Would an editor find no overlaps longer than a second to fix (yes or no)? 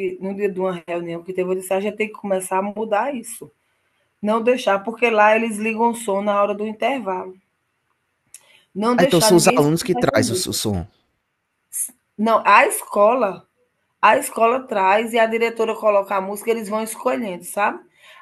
no